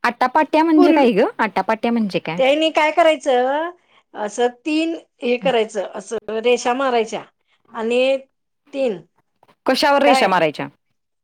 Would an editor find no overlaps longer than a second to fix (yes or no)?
yes